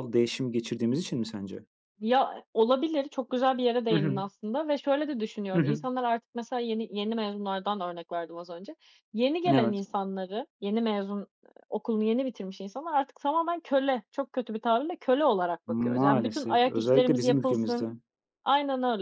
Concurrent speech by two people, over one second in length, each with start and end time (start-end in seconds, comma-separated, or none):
15.7-17.9